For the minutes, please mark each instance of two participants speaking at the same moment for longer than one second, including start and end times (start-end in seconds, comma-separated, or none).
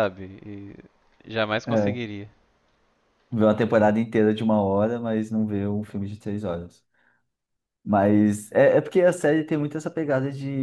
none